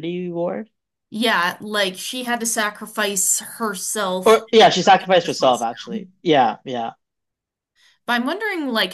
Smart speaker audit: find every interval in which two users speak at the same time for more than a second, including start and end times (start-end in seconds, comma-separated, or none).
4.2-6.1